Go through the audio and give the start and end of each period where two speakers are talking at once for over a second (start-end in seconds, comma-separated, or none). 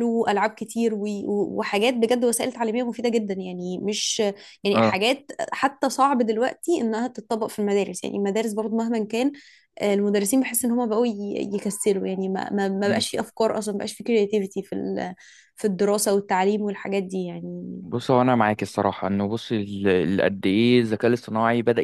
none